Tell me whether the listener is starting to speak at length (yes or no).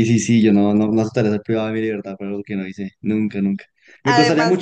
no